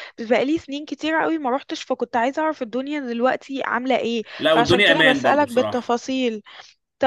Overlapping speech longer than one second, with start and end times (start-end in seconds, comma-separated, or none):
4.4-6.0